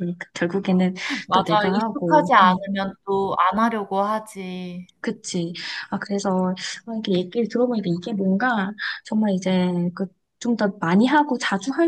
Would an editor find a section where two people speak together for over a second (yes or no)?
yes